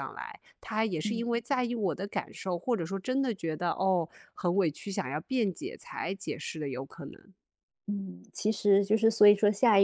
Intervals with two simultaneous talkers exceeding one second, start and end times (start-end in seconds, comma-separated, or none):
none